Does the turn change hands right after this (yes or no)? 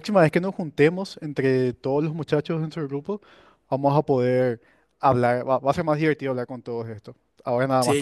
yes